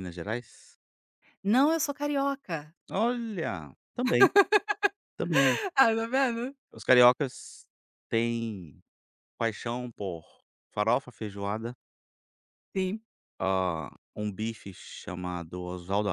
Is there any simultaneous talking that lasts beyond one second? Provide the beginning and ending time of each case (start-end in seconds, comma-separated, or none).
none